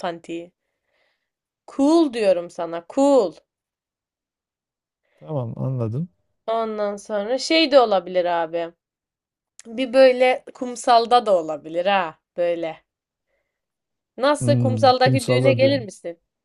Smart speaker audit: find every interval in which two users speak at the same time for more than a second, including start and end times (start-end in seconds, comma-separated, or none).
14.4-15.9